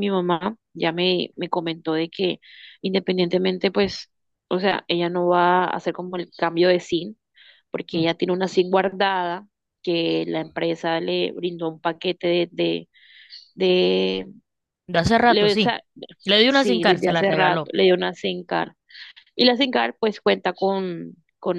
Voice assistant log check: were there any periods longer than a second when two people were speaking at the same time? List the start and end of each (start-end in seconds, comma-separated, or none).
16.5-17.7